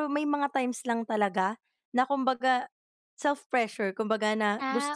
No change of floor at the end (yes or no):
yes